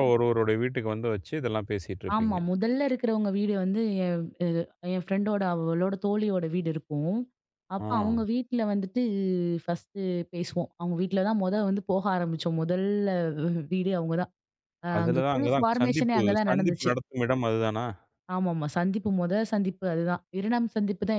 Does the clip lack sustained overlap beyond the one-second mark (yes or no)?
no